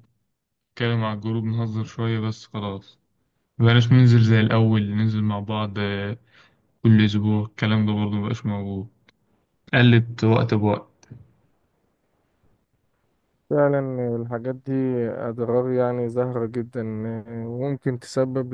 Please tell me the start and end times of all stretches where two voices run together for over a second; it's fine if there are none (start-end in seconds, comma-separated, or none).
none